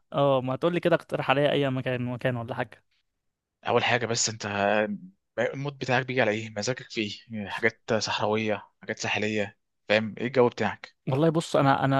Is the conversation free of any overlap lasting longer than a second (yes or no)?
yes